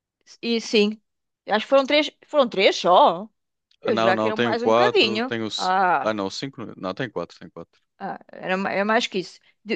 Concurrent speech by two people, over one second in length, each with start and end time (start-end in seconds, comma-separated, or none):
3.8-6.1